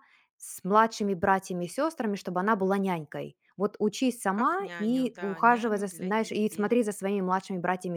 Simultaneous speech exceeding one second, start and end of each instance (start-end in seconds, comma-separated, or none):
4.4-6.7